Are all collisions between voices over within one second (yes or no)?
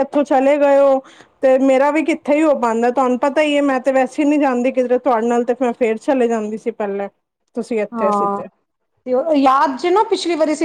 yes